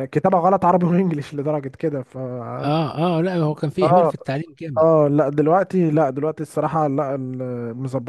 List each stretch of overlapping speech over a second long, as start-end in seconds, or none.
none